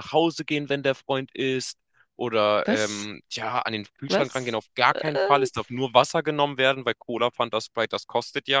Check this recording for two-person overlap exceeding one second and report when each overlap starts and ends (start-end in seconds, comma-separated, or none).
4.1-5.5